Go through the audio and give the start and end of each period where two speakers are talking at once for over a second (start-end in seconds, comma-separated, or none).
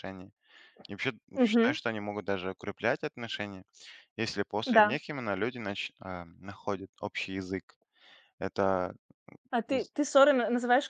none